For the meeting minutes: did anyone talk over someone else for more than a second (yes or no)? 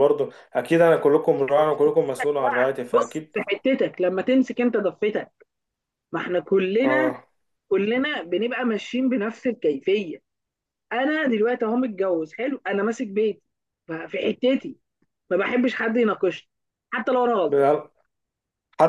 no